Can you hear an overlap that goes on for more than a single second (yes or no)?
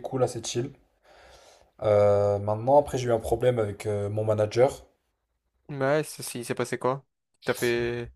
no